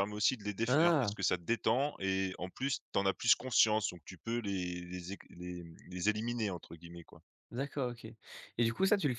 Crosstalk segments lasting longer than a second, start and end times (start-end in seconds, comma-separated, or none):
none